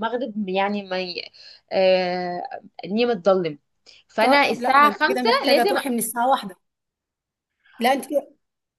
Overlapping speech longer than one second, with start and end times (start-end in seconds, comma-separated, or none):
4.2-5.8